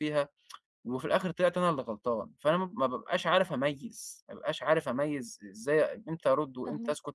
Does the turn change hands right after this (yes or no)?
no